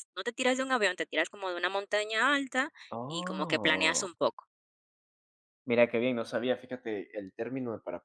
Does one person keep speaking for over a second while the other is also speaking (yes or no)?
yes